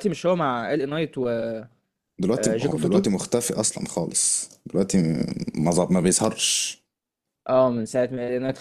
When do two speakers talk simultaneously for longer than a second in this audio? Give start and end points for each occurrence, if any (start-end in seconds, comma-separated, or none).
none